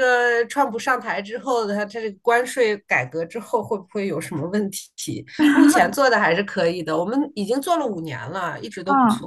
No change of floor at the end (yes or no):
no